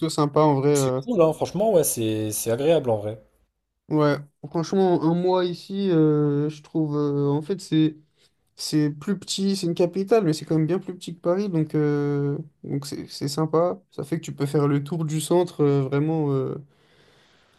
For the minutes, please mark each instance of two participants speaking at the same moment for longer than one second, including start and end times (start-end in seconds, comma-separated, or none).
none